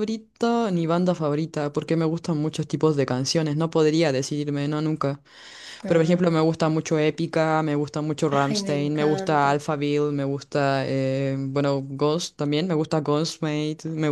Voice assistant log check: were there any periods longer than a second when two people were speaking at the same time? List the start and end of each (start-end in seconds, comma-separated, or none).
8.3-9.6